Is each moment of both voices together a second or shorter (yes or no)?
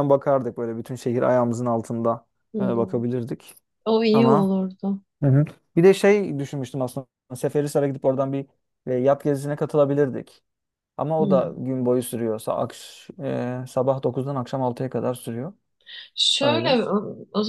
yes